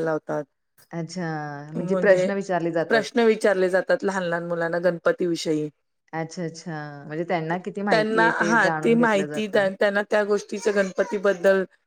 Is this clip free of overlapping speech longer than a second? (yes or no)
no